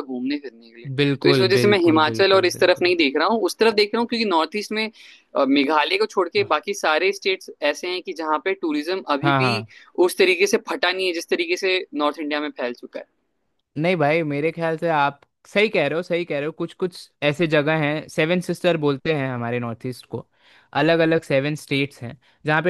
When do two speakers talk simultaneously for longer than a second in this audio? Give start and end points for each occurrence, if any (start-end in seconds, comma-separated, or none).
1.0-2.9